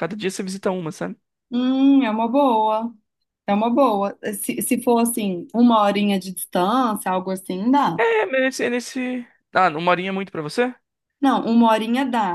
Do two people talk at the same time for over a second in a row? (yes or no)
no